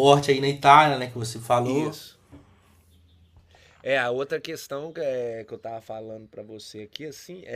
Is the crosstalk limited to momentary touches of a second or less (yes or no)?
yes